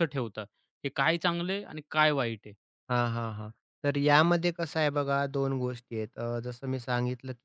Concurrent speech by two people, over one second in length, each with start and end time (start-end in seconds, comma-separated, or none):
none